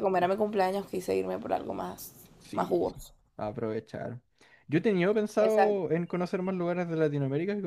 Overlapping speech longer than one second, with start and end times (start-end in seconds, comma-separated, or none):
none